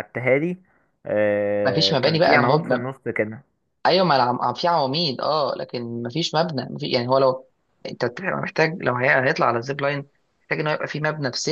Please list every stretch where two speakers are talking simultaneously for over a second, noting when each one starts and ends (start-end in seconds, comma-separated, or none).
1.6-2.9